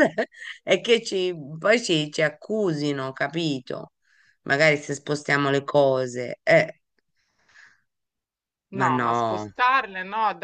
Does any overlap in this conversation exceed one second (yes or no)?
no